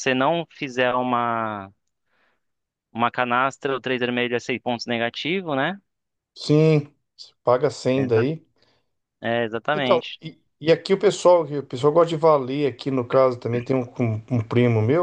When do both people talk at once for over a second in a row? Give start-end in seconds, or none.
none